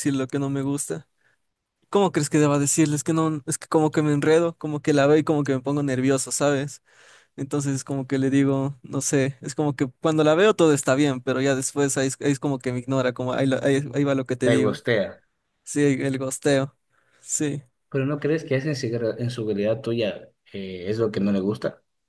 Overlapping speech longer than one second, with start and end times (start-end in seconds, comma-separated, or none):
none